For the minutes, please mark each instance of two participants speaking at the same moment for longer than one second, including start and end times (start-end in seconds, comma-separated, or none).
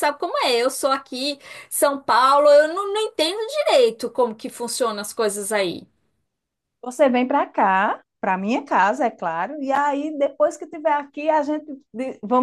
none